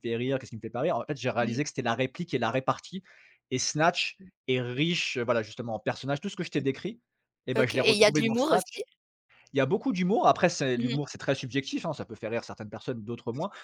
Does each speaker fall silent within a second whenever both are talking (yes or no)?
no